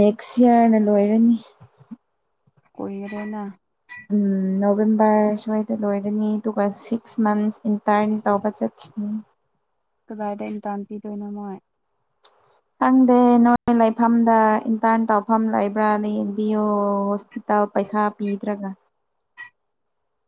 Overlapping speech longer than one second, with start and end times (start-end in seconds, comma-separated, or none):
none